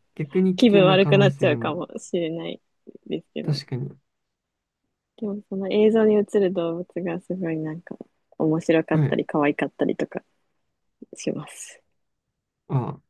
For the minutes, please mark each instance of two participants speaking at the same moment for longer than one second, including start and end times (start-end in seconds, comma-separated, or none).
0.6-1.9